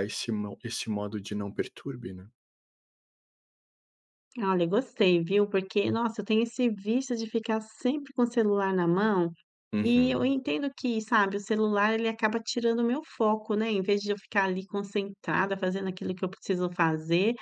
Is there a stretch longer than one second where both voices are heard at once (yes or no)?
no